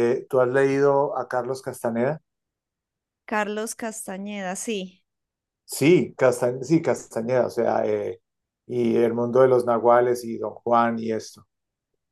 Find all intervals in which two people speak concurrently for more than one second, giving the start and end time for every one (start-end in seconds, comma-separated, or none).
none